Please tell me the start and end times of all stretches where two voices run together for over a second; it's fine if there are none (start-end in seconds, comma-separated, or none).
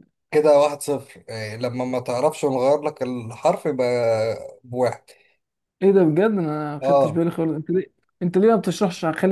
none